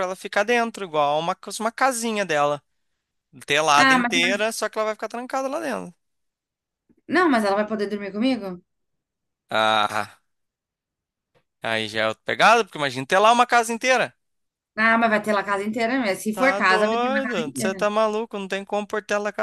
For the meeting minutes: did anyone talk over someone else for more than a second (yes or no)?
yes